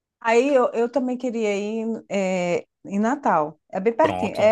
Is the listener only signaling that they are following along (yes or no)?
no